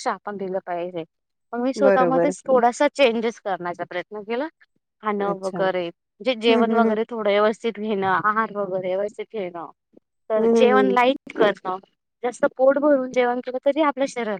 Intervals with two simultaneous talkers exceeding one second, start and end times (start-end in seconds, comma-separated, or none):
none